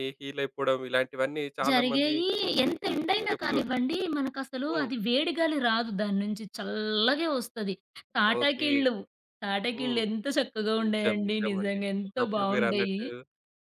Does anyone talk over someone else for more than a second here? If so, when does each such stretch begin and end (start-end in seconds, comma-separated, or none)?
10.9-13.0